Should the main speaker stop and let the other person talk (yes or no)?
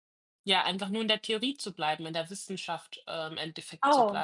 yes